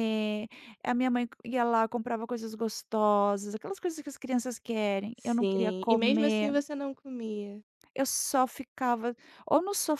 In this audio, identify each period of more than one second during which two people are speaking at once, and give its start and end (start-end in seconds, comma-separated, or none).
5.2-6.5